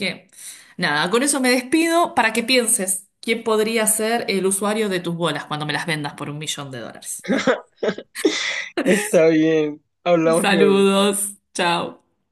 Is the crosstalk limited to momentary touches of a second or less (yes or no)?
yes